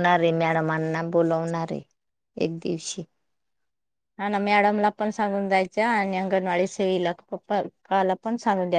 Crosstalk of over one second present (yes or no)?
no